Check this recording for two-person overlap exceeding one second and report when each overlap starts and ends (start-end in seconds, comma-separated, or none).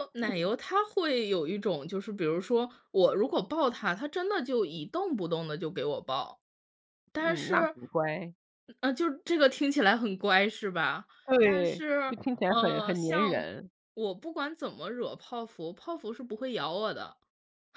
11.3-13.5